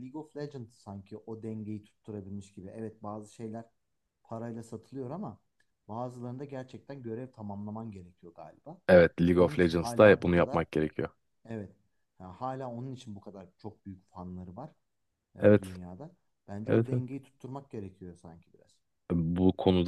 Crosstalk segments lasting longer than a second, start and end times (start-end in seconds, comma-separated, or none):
9.4-10.6